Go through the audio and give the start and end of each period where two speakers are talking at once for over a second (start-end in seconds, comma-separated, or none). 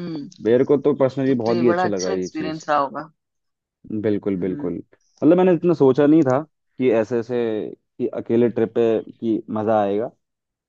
1.3-2.6